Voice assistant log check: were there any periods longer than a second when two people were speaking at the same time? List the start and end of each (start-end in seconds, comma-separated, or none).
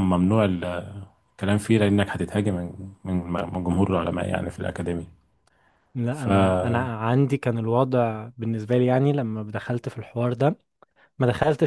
none